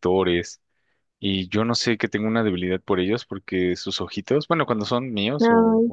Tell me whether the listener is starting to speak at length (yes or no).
no